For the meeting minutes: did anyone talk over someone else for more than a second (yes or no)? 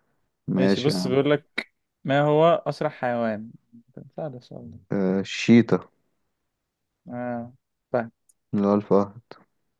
no